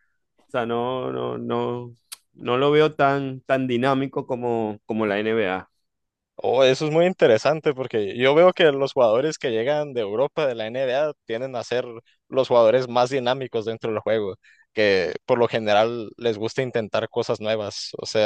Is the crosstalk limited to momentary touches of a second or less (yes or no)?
yes